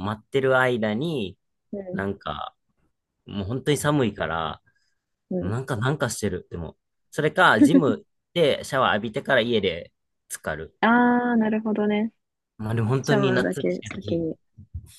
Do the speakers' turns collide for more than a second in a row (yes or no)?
yes